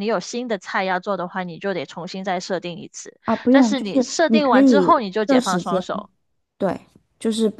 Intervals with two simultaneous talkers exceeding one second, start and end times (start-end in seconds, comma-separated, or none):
3.2-5.8